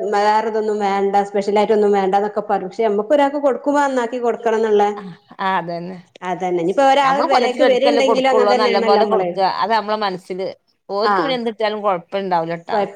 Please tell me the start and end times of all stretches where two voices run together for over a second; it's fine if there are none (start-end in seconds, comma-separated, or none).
7.1-9.3